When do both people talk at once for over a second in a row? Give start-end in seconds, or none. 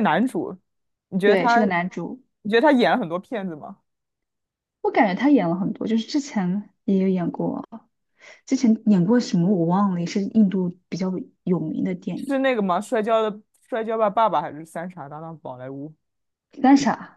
none